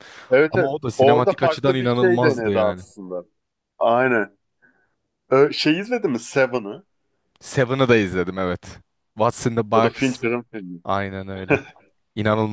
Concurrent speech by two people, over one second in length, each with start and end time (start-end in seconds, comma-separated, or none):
0.5-2.8